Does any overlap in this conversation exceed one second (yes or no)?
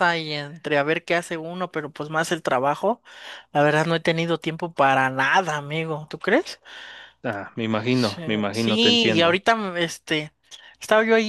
yes